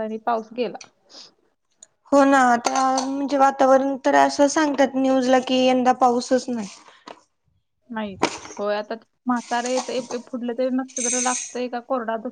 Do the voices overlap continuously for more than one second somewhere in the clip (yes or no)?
no